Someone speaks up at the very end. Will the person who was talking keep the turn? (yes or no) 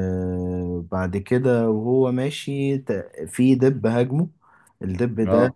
yes